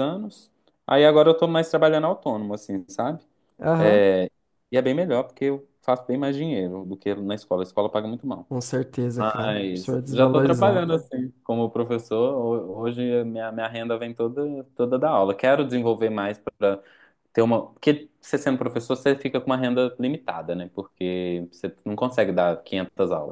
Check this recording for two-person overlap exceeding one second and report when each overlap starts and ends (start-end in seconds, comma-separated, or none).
9.2-10.8